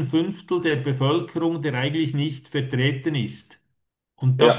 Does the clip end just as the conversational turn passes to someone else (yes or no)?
no